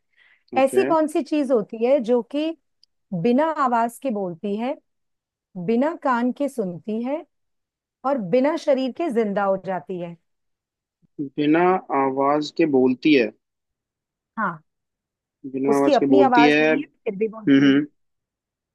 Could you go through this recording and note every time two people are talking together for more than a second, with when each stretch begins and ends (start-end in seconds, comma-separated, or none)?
15.7-17.8